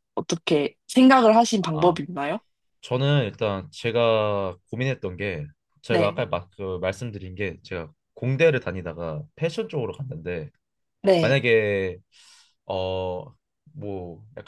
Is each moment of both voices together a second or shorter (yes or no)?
yes